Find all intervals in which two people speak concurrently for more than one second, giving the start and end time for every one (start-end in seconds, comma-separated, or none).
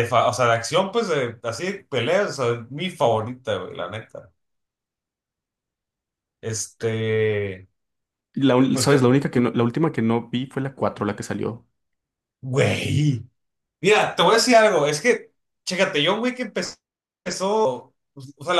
none